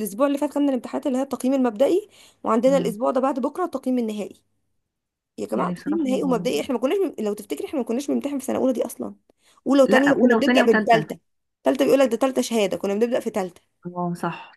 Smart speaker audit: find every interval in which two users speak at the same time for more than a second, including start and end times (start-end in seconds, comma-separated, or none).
9.9-11.1